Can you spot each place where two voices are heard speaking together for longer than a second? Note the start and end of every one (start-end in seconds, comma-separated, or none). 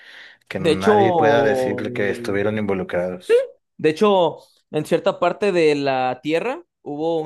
0.6-1.8